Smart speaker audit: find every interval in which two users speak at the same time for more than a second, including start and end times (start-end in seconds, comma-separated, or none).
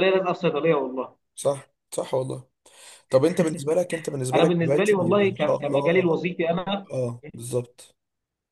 4.3-6.0